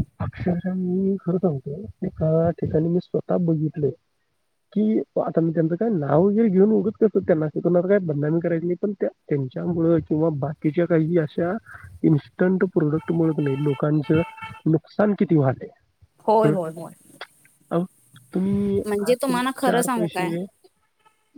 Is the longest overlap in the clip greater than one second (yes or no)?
yes